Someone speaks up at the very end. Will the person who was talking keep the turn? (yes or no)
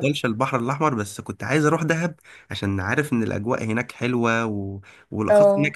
yes